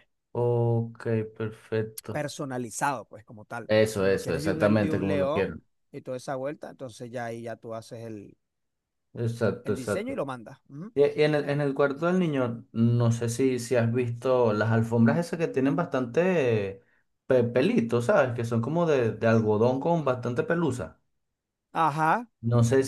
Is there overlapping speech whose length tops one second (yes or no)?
yes